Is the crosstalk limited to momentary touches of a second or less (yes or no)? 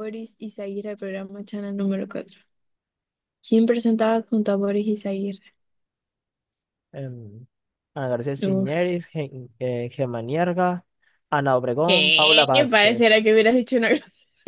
no